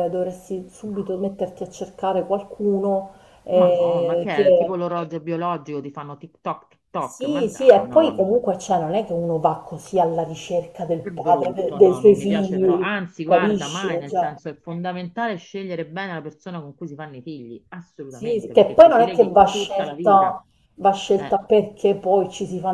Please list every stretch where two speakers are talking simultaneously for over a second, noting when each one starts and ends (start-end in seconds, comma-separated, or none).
3.5-4.8, 7.0-8.4, 11.0-14.3, 18.1-20.4